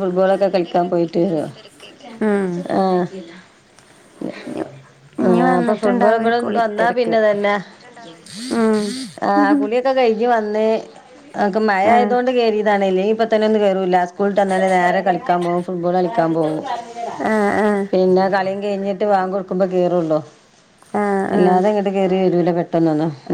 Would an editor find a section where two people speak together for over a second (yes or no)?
yes